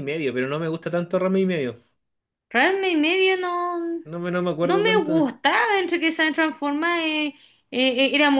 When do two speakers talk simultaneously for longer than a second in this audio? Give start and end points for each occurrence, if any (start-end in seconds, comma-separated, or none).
none